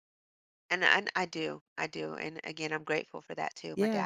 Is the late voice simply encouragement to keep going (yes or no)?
no